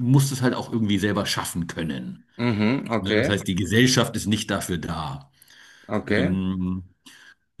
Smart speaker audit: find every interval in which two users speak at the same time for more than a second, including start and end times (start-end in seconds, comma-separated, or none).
none